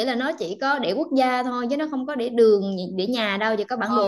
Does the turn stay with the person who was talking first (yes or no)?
no